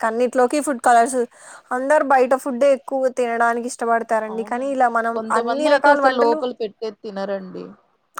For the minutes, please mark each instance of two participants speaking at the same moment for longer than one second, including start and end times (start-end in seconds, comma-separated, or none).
4.3-6.4